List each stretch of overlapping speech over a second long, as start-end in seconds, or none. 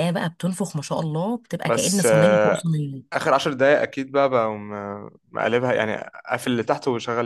none